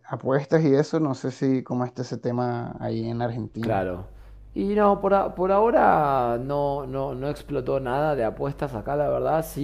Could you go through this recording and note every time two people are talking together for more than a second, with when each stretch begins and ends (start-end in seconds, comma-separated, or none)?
none